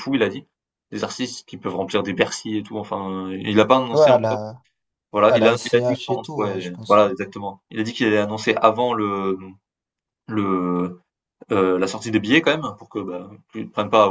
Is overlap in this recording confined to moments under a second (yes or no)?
no